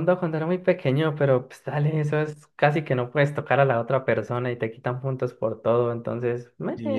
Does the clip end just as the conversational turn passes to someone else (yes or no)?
yes